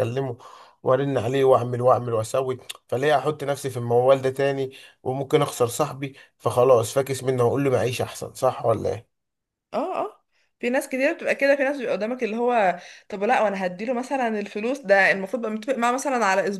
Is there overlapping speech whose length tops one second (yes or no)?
no